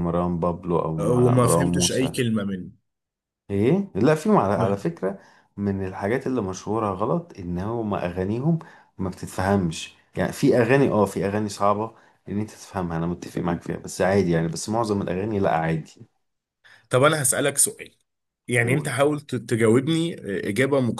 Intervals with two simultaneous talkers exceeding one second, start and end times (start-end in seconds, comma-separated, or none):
1.0-2.2